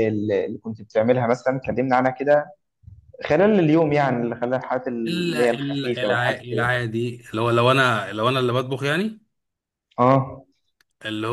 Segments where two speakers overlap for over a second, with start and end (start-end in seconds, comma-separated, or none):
5.1-6.7